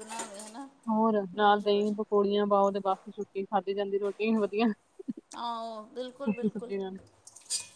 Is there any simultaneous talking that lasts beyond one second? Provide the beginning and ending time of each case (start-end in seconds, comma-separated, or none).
5.4-6.7